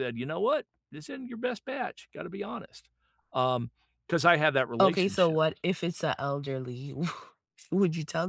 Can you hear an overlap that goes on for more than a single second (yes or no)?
no